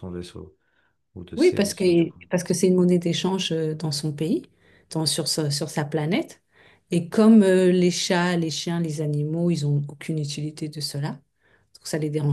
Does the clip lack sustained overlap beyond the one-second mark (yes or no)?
yes